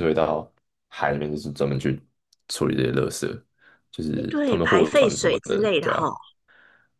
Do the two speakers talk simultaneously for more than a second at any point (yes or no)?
yes